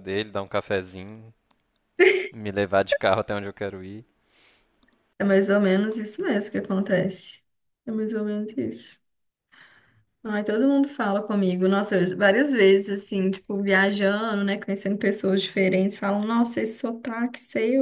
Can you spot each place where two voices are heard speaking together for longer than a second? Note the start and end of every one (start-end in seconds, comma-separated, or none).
none